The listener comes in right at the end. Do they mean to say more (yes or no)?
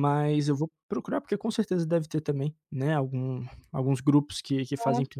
no